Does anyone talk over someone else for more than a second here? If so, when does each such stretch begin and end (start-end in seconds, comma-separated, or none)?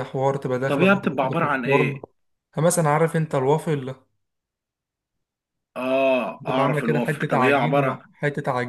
0.7-2.0, 6.5-8.0